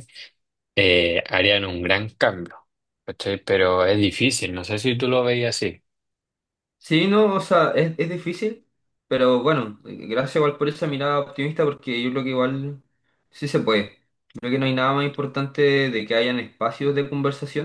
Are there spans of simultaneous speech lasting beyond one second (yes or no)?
no